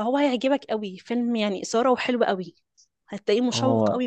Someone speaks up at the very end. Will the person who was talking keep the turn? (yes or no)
yes